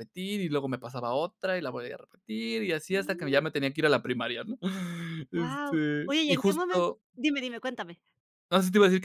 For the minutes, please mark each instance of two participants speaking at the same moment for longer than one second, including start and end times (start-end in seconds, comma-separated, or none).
5.3-7.0